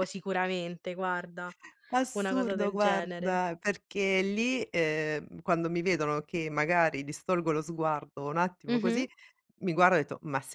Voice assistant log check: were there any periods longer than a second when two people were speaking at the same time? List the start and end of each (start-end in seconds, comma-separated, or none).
2.1-3.4